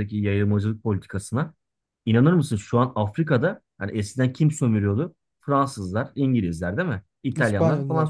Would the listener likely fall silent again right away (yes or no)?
yes